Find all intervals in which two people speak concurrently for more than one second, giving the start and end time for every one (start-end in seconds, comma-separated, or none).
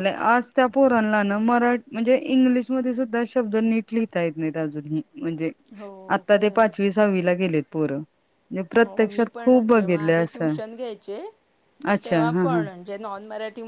8.8-10.6